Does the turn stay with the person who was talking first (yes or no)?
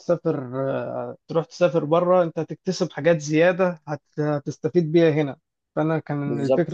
yes